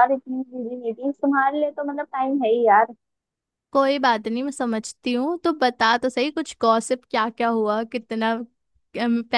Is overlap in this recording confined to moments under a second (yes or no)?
yes